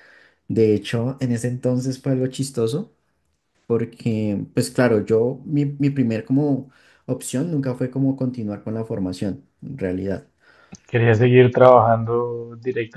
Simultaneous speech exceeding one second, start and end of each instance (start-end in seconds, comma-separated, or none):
none